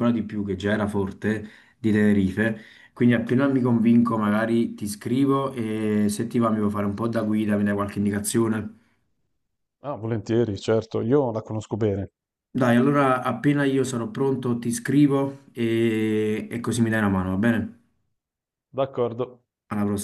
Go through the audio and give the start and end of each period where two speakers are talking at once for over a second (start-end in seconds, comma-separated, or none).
none